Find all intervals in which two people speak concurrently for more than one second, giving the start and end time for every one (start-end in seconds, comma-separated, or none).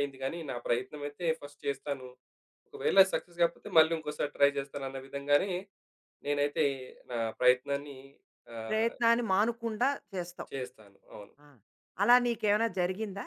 none